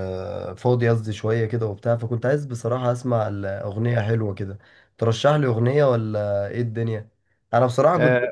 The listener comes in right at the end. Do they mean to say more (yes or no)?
yes